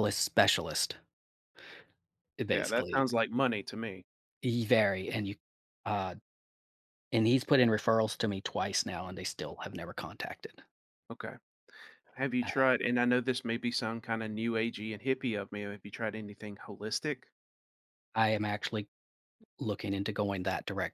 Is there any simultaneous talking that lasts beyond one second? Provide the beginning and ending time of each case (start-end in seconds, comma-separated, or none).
none